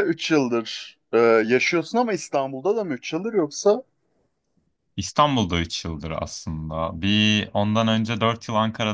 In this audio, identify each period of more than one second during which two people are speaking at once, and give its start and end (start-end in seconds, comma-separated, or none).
none